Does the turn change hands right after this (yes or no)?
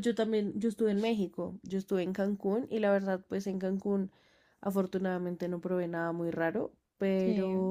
no